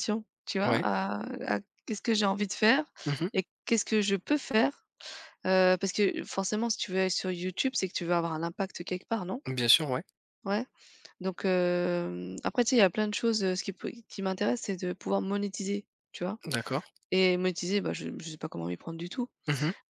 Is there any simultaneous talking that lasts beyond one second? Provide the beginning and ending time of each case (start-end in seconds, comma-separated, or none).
none